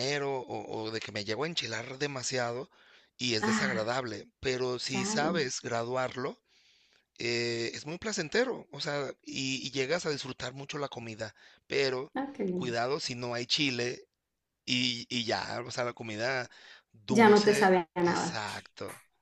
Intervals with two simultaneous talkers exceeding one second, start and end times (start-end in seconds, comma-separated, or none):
17.1-18.4